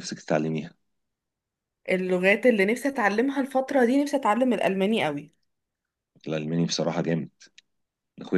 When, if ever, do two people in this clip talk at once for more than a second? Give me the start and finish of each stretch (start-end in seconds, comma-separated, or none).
none